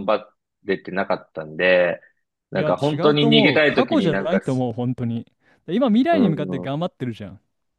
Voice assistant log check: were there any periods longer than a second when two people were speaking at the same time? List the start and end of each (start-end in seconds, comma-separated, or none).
2.5-4.4